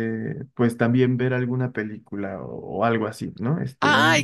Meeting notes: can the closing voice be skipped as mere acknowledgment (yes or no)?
no